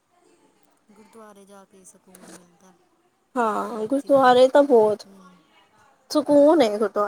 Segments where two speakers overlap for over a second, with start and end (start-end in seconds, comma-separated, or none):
3.5-5.1